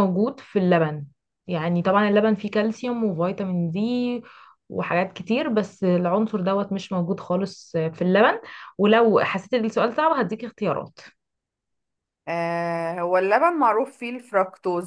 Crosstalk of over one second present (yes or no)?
no